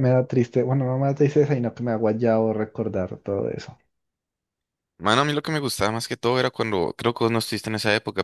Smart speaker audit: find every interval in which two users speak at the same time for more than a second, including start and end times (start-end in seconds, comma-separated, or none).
none